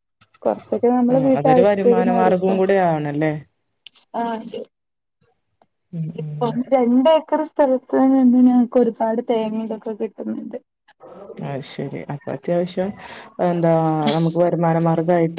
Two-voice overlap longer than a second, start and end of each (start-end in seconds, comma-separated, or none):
1.1-2.5